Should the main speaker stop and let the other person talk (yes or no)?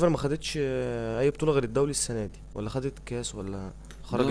yes